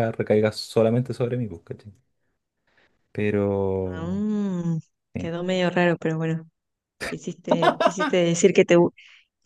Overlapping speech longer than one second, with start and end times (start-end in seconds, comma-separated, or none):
none